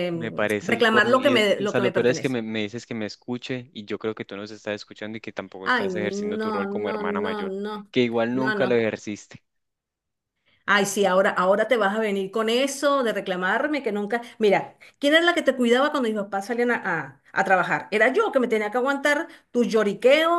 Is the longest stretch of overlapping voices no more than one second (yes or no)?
no